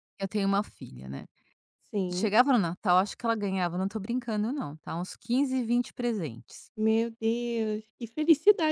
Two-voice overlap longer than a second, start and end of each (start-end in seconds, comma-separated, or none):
none